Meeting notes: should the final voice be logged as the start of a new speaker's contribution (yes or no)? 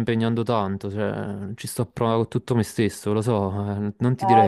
yes